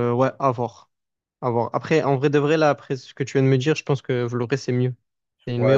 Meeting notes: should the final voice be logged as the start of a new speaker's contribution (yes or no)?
yes